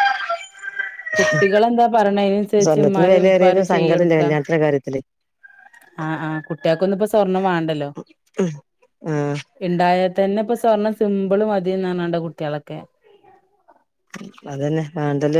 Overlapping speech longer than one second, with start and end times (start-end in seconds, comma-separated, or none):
2.6-4.2